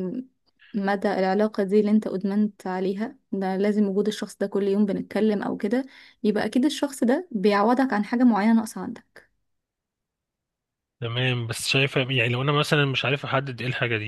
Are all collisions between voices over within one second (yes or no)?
yes